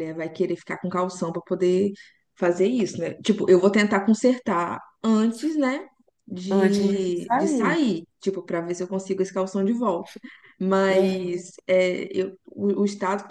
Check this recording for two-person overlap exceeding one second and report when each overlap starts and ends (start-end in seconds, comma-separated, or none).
6.5-7.8